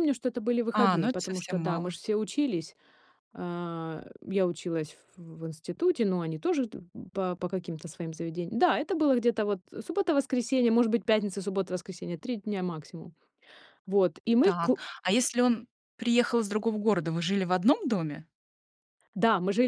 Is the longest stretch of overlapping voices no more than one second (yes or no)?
no